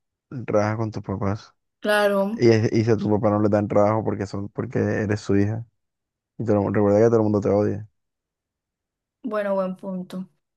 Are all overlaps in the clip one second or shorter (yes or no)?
yes